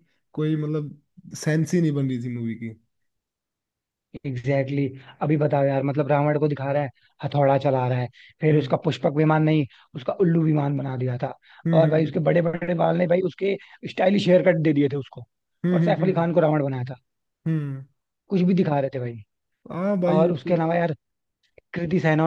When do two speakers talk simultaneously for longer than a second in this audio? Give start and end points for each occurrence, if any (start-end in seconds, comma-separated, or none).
none